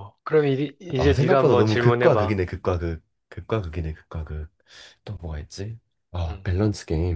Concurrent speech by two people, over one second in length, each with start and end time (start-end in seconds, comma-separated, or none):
1.0-2.4